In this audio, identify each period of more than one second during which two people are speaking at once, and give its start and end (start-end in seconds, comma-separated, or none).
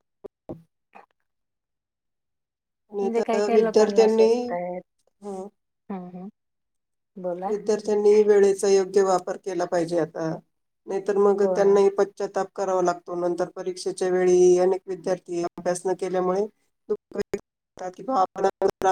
3.0-4.3